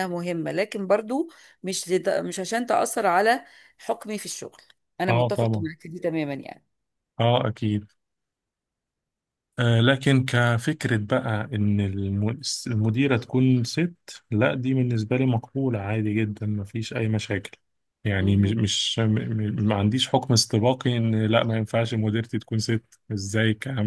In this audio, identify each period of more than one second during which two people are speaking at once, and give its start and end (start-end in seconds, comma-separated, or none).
none